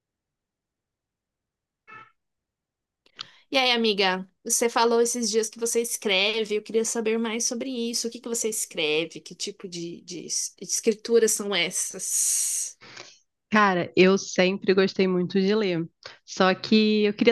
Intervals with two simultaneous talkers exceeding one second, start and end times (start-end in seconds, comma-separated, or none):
none